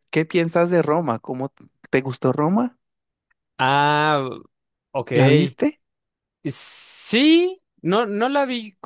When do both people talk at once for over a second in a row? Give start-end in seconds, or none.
none